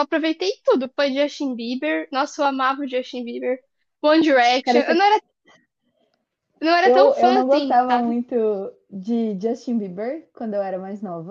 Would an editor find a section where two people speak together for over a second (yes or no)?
yes